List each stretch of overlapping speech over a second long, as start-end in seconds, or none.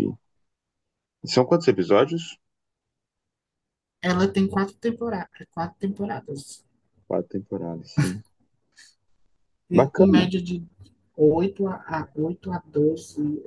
none